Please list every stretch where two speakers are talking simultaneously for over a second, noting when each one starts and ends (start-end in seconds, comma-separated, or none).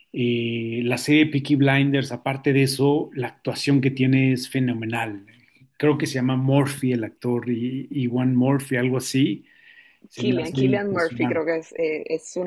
10.1-11.4